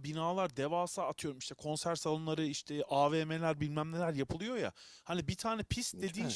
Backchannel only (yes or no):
yes